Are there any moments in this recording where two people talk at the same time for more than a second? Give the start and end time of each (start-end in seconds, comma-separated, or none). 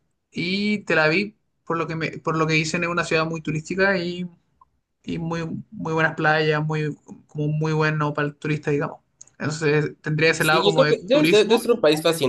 10.4-11.7